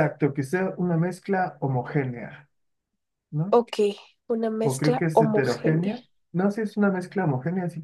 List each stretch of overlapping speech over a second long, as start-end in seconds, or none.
4.6-6.0